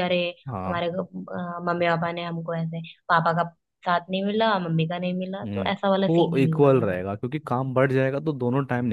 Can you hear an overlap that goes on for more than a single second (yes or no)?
yes